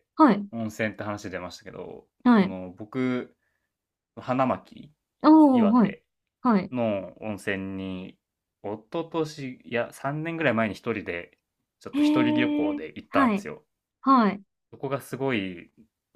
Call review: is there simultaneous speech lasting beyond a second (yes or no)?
yes